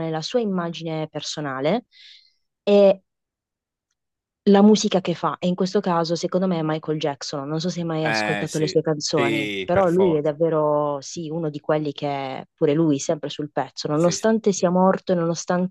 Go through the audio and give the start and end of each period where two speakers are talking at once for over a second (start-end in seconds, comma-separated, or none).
8.0-10.4